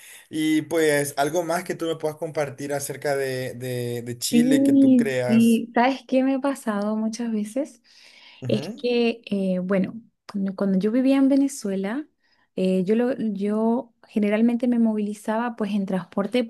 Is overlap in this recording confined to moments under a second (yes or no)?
no